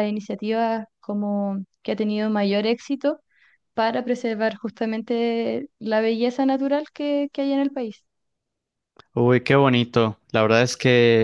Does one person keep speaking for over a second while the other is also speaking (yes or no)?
no